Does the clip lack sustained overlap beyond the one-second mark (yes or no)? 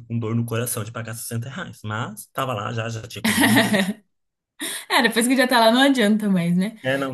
yes